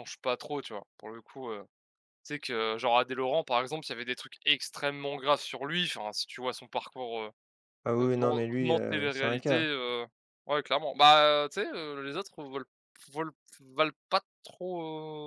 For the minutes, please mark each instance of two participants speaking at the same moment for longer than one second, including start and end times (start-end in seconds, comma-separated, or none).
8.0-9.7